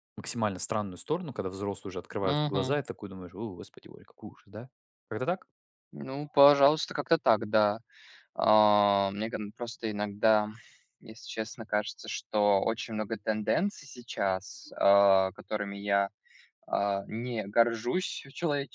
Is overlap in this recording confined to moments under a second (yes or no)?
yes